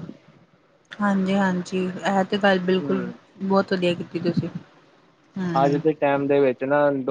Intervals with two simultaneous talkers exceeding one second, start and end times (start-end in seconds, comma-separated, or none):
none